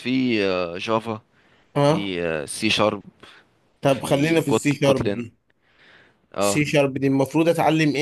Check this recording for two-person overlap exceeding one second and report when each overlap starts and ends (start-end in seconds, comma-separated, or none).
3.9-5.3